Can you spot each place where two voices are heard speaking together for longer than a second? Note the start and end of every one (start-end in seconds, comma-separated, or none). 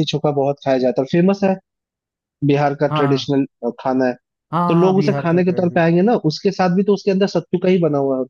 4.7-6.0